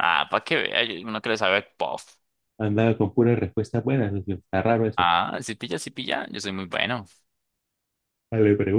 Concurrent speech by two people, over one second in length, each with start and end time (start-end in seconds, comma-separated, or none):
none